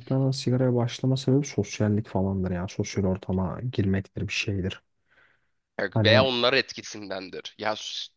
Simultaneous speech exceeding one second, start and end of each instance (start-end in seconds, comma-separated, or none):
none